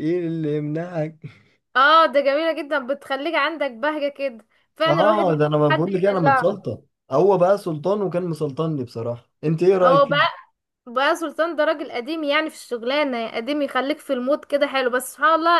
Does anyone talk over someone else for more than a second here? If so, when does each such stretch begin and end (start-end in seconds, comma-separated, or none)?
4.9-6.6